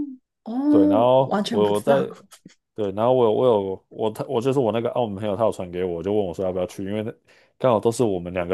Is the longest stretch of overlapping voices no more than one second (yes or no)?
no